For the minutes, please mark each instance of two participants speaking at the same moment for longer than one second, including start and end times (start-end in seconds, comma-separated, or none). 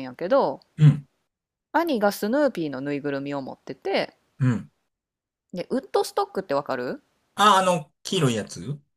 none